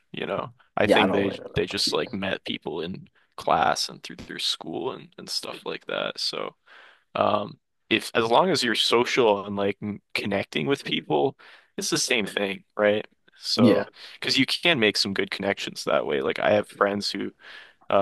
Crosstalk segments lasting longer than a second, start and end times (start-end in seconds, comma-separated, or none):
0.8-2.2